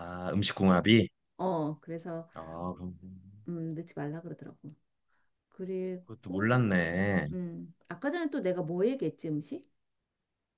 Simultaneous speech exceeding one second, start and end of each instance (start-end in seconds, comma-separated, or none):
none